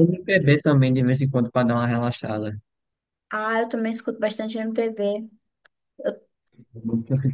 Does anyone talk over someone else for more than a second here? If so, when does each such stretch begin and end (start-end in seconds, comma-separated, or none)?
none